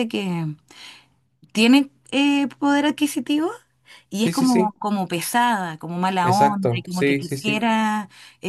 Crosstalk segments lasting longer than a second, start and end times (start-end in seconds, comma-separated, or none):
6.2-7.6